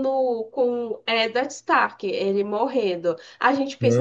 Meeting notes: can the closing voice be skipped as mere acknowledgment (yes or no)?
yes